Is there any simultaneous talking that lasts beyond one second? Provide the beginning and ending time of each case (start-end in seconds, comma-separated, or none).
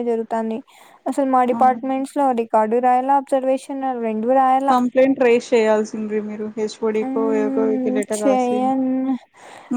7.1-8.9